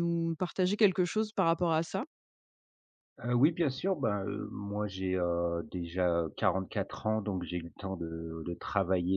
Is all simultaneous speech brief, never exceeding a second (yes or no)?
yes